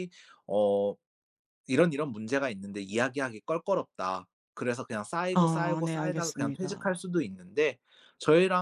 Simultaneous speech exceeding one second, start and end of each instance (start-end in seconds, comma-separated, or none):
5.3-7.0